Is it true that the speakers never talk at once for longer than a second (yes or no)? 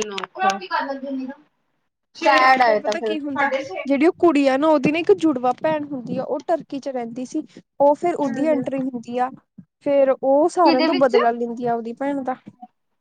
yes